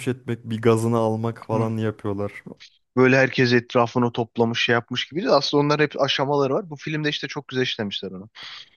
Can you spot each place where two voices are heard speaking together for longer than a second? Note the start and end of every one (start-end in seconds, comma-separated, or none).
none